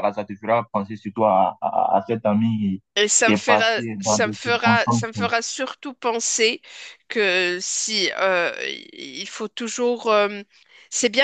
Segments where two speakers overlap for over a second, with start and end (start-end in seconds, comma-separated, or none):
3.2-5.1